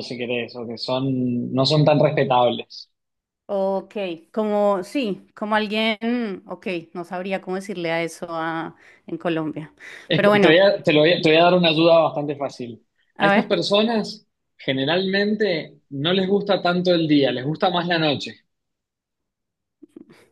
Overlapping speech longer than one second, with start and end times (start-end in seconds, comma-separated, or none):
none